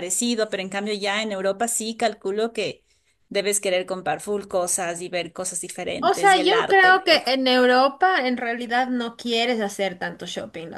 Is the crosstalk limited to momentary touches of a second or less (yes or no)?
no